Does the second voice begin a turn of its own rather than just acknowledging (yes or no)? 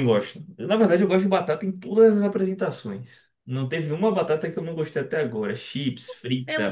yes